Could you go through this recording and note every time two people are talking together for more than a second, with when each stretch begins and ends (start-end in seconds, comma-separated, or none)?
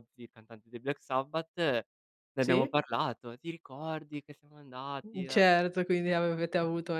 none